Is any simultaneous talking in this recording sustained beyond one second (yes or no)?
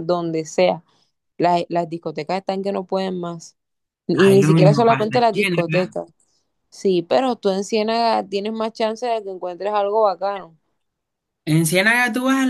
yes